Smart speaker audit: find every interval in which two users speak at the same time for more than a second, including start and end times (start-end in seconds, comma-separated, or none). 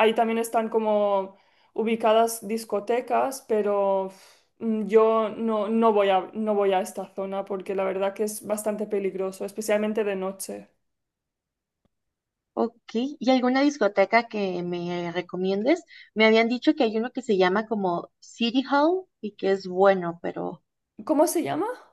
none